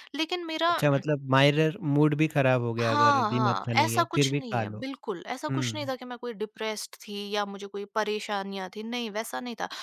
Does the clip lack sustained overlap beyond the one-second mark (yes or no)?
no